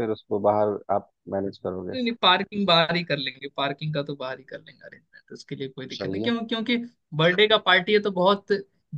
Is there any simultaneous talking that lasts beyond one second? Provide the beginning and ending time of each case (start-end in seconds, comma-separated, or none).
none